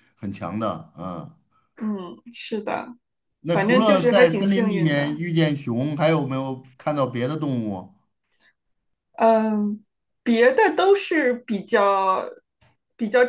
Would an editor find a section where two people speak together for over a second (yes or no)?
yes